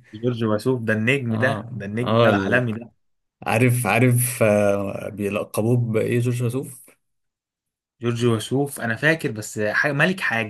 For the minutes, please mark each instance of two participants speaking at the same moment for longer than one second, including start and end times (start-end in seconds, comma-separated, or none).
1.3-2.6